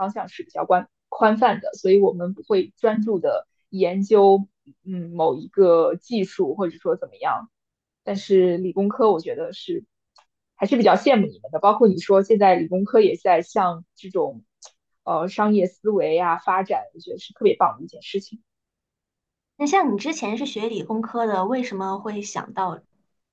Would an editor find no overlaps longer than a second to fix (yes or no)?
yes